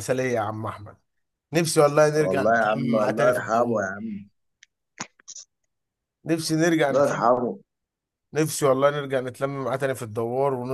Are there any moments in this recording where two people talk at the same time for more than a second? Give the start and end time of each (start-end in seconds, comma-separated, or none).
2.2-3.9